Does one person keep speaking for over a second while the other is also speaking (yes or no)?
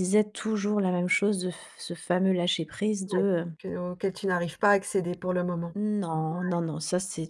no